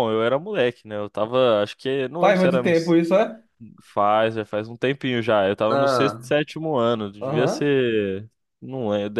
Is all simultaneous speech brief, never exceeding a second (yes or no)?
yes